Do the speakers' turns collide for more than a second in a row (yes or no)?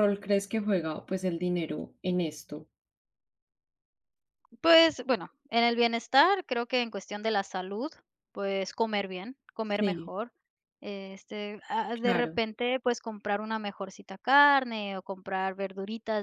no